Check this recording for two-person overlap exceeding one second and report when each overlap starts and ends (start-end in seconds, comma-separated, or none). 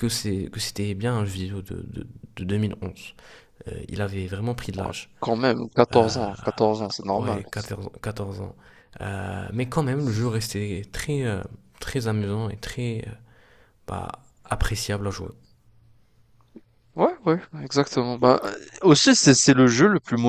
none